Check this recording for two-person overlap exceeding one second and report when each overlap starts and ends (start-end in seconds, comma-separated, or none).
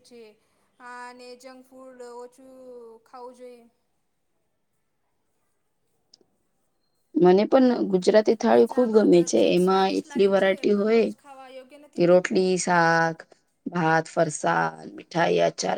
8.5-11.0